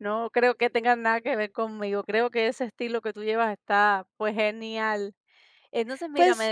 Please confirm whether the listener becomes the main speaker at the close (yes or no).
no